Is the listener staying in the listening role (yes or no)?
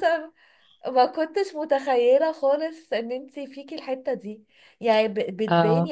yes